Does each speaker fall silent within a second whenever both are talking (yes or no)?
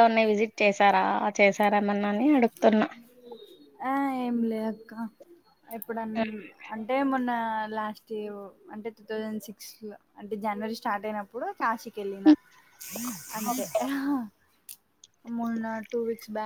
yes